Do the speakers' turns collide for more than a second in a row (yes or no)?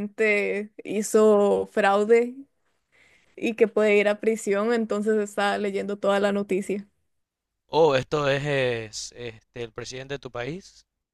no